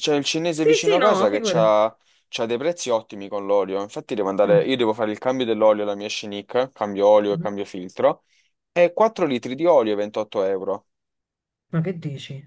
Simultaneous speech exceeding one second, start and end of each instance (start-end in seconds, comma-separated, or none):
0.5-1.7